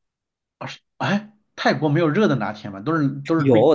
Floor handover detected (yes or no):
yes